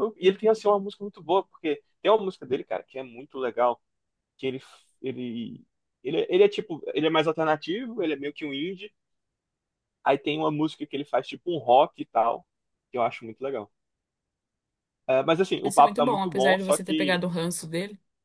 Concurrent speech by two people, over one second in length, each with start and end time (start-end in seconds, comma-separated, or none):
15.6-17.2